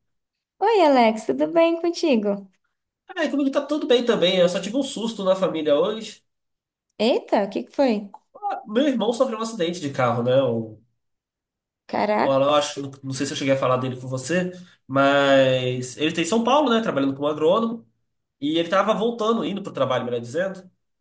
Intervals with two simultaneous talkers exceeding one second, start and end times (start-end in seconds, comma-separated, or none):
none